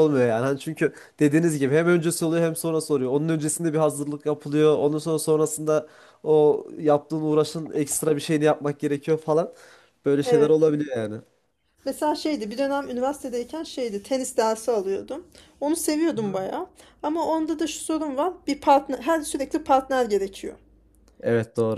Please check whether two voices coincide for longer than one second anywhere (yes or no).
no